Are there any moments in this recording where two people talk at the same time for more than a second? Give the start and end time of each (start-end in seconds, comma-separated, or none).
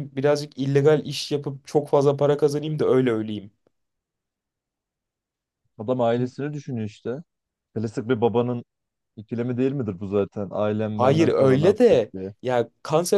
11.0-12.3